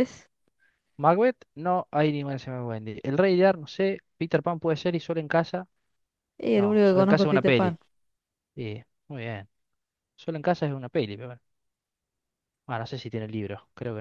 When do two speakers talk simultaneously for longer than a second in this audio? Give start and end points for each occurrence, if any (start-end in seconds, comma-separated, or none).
6.5-7.8